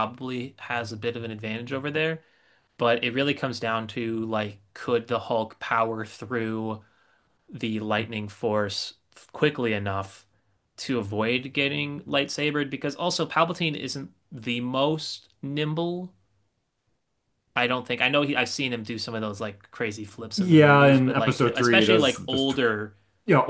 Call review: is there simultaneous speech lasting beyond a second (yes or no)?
yes